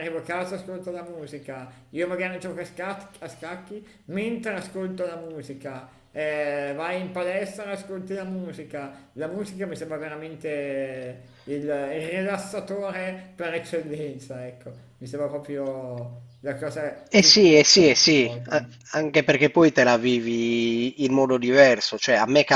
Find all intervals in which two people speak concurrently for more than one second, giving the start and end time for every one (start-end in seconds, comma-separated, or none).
17.1-18.7